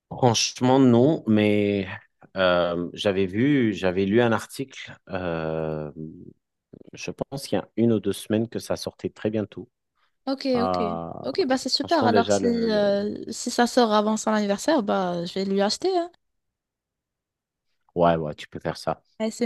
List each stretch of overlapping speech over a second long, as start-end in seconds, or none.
11.8-13.0